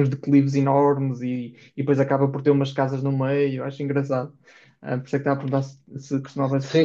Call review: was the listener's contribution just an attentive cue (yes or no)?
no